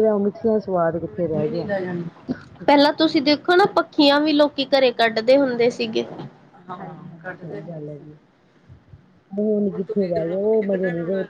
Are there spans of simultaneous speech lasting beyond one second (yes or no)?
no